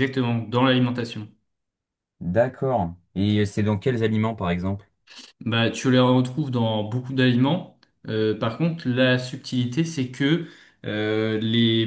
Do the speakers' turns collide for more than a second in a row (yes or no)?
no